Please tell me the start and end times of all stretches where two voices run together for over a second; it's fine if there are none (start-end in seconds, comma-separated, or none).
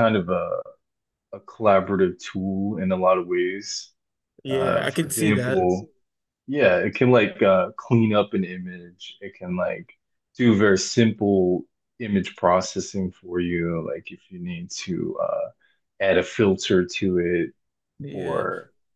4.5-5.7